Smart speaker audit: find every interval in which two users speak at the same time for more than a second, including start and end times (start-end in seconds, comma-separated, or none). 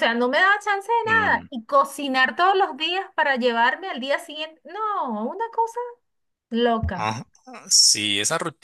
none